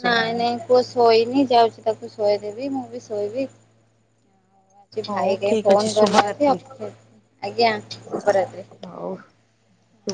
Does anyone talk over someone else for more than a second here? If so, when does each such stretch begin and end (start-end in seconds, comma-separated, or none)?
5.1-6.6